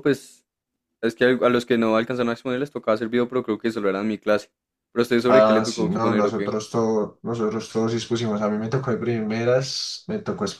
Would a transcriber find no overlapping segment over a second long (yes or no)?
no